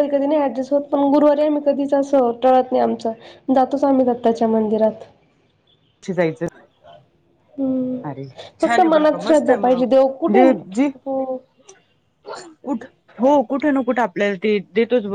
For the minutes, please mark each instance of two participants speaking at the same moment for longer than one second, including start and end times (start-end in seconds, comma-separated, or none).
8.6-10.9